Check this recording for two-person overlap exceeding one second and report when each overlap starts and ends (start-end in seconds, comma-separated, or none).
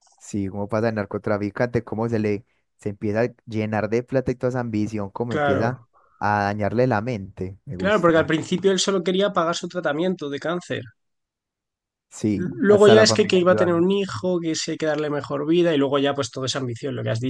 12.3-13.8